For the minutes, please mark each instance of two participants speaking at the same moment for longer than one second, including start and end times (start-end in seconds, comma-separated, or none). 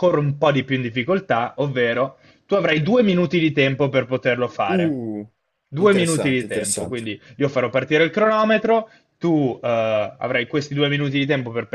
5.8-7.1